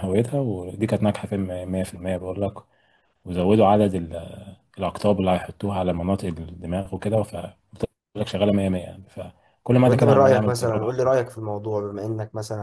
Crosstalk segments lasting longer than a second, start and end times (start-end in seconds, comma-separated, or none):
9.8-11.3